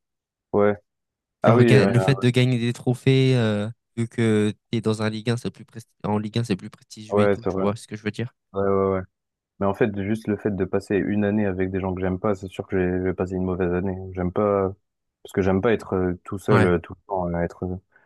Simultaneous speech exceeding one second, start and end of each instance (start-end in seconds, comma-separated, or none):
none